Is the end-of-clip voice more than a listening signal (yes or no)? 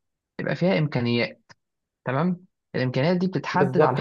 yes